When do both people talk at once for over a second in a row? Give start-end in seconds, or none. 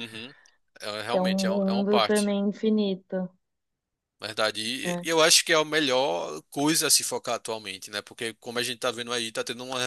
1.1-2.3